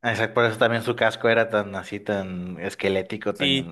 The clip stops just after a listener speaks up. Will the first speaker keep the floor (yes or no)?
no